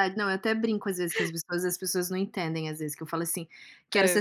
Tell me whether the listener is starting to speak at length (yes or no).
no